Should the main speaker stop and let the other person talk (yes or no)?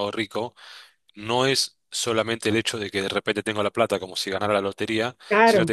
no